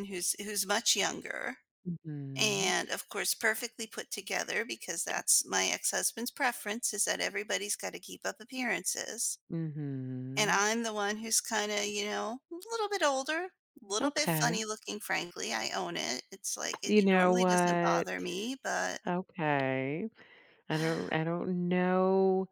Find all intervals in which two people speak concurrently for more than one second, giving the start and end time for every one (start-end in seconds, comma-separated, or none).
16.8-18.1